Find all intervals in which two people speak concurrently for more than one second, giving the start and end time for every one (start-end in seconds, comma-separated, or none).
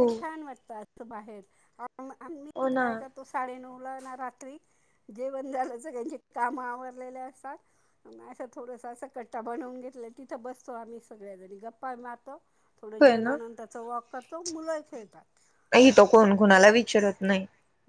none